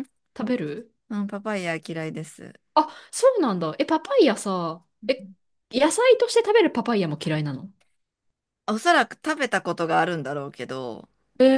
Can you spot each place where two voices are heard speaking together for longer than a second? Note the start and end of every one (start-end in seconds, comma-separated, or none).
none